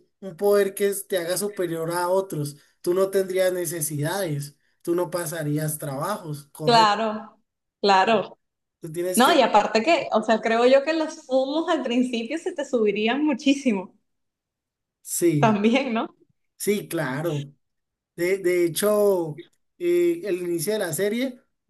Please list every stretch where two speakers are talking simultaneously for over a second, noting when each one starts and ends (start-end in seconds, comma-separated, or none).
none